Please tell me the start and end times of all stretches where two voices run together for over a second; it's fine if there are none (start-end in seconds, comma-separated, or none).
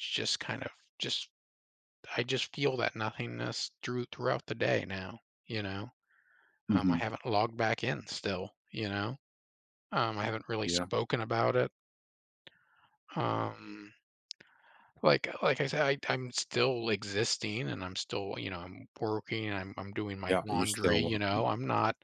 20.3-21.5